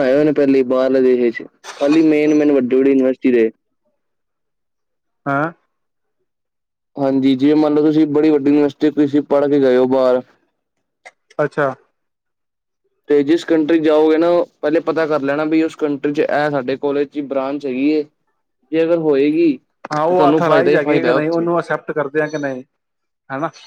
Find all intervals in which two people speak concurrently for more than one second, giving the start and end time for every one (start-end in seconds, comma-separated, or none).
19.9-21.5